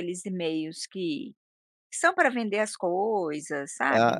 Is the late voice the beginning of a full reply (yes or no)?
yes